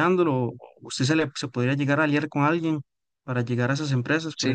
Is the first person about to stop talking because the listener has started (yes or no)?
yes